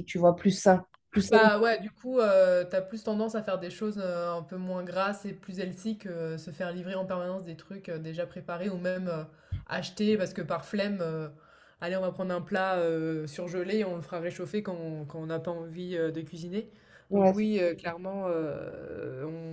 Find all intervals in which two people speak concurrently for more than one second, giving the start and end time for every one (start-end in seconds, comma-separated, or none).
none